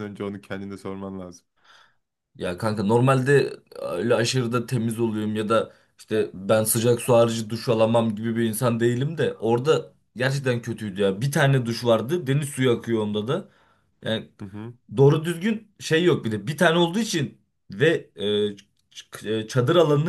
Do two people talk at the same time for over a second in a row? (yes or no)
no